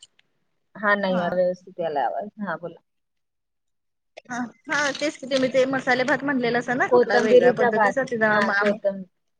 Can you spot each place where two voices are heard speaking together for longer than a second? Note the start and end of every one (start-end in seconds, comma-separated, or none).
none